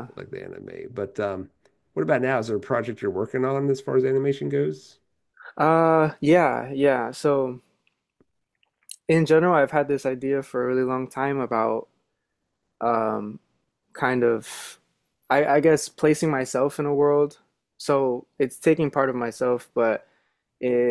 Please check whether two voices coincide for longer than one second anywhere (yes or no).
no